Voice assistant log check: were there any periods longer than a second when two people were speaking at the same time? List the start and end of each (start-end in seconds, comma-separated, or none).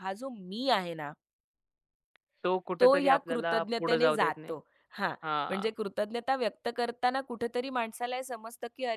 2.8-4.5